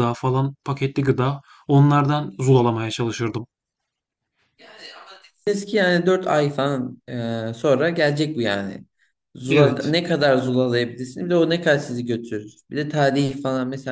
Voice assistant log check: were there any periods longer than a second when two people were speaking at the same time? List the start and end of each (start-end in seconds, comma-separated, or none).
none